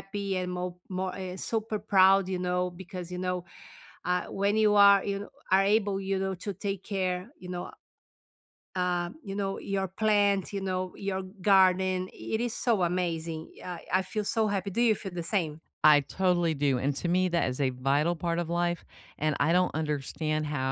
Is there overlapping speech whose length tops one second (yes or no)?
no